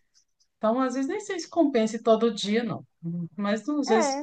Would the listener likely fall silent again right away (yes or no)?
no